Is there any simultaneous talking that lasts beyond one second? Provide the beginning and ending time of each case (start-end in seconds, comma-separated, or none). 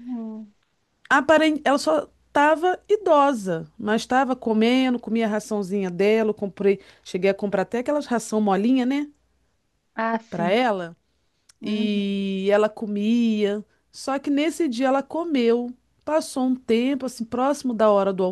none